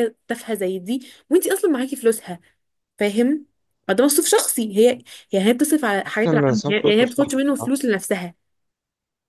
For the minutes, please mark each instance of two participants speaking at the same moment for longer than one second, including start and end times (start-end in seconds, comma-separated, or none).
6.0-7.7